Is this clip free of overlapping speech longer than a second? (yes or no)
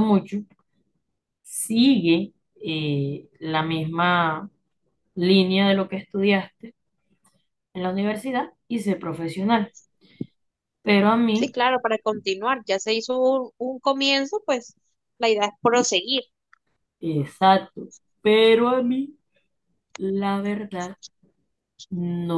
yes